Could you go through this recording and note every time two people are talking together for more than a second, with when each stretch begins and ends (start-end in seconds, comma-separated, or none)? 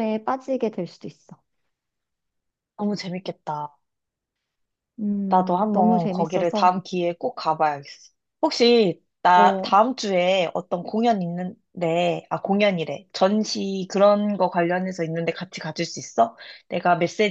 5.3-6.7